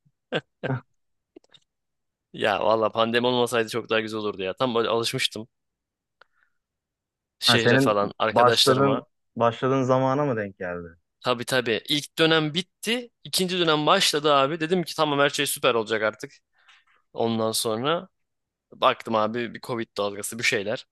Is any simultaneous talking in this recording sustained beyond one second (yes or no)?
yes